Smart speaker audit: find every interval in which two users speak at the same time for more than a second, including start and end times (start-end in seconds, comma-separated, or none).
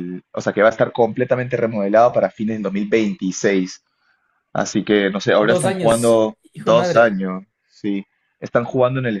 5.4-7.2